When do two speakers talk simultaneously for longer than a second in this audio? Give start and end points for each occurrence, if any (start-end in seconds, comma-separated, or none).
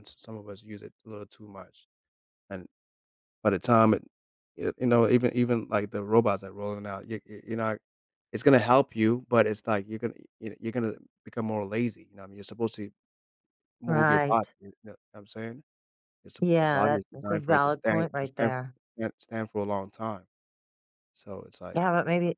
16.4-18.5